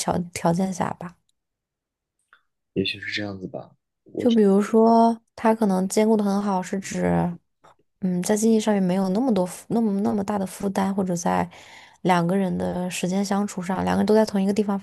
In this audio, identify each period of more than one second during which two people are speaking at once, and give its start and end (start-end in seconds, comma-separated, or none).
none